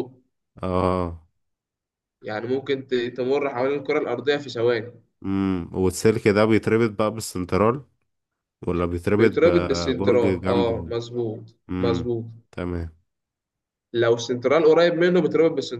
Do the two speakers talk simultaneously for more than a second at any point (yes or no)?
yes